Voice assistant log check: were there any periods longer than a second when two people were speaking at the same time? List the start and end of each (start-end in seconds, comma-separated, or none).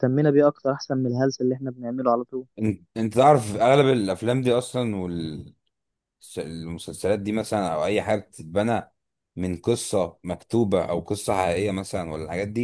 none